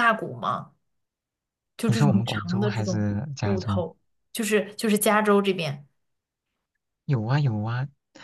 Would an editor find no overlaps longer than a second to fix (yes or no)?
no